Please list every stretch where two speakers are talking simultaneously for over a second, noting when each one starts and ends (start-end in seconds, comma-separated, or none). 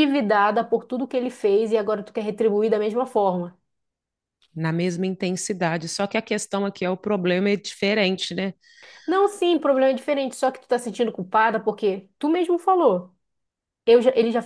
none